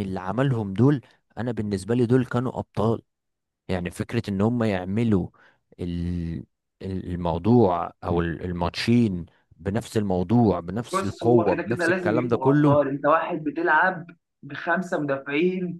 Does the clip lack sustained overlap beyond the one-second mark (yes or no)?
no